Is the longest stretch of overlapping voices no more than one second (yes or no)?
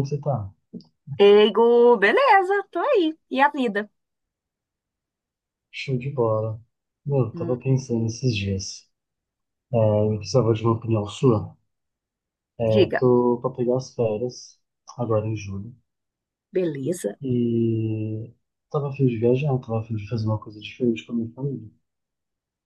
yes